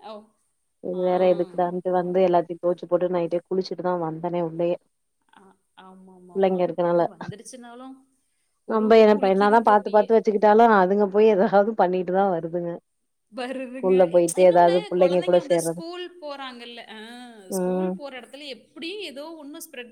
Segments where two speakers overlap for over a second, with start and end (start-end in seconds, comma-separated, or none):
13.7-15.8